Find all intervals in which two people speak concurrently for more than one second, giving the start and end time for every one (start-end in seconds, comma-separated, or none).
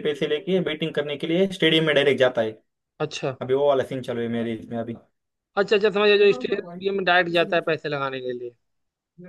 none